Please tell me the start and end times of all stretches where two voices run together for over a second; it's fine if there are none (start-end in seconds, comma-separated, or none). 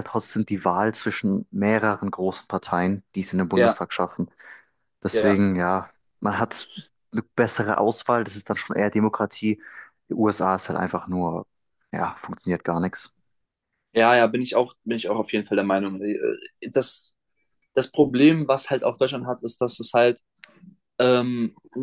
none